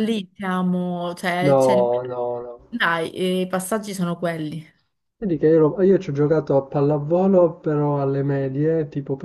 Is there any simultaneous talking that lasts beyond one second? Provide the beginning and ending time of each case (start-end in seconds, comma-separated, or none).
none